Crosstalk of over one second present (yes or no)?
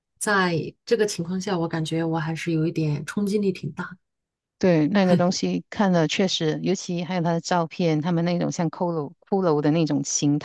no